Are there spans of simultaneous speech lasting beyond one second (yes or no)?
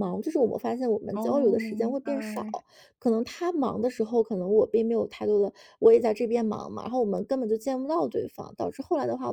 yes